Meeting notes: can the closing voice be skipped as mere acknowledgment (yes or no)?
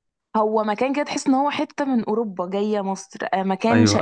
yes